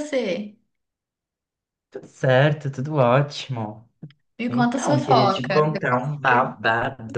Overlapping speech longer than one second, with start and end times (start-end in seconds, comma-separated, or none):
4.5-6.5